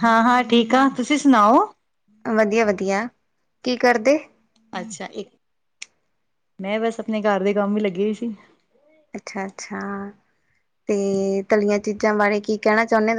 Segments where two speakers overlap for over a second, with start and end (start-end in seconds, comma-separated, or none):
none